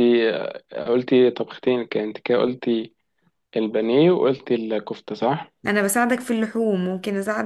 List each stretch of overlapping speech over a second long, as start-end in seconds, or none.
none